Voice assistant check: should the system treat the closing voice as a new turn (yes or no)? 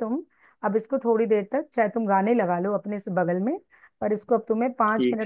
no